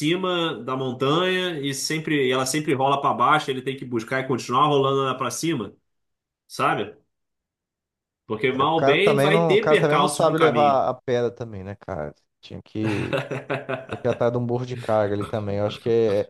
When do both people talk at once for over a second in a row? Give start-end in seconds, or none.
8.6-10.8